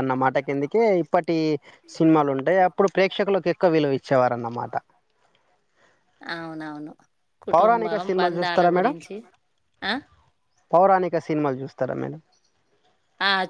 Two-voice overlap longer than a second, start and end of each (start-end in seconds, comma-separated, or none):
7.5-8.9